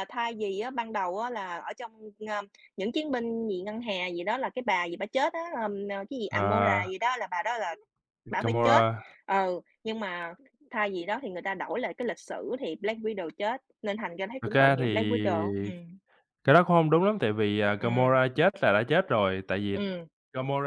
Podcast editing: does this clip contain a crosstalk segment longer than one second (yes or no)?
yes